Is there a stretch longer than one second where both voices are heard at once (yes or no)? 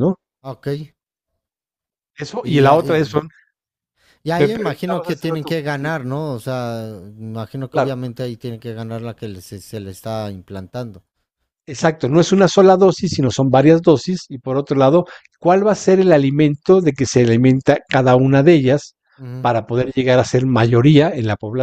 yes